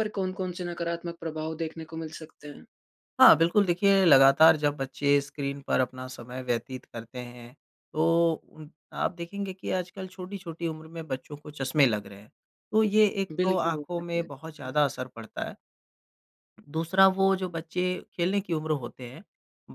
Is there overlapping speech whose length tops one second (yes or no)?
yes